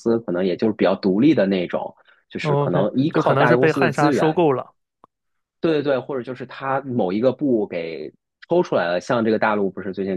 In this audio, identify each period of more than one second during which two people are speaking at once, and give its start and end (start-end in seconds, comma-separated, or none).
2.4-4.4